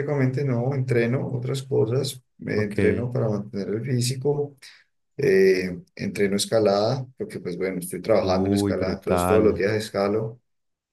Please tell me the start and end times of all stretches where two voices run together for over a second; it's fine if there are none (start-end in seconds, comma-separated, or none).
8.2-9.6